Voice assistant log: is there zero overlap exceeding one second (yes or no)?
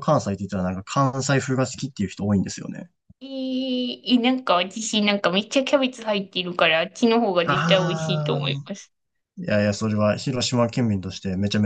no